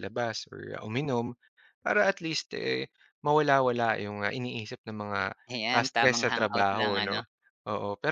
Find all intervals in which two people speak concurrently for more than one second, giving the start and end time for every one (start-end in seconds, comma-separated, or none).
5.8-7.2